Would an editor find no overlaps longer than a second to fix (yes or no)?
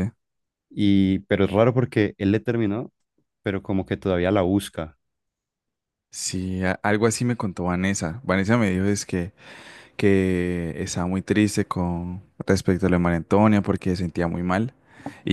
yes